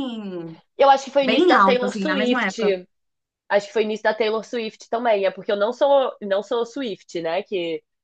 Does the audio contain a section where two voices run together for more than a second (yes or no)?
yes